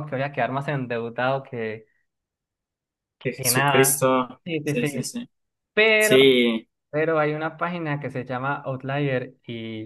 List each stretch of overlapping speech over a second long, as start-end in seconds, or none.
3.4-5.2